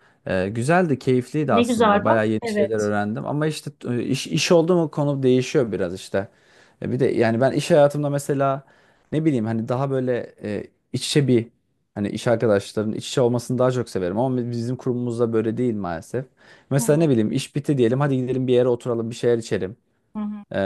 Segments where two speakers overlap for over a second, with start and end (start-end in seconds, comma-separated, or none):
1.5-2.9